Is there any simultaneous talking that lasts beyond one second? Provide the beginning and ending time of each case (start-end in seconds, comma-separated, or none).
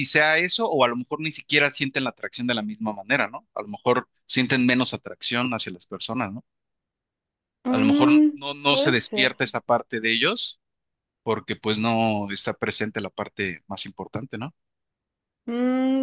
7.7-9.3